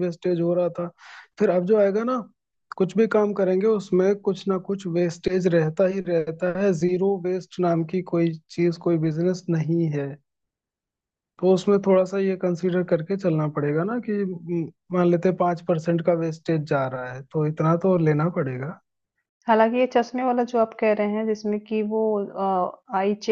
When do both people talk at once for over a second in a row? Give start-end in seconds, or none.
none